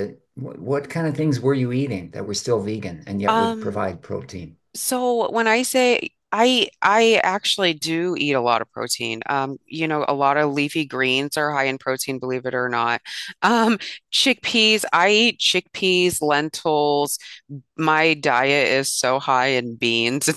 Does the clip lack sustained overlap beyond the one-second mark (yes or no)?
yes